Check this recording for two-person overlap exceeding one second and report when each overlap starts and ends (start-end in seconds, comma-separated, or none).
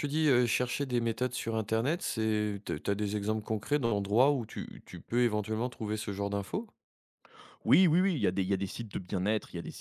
none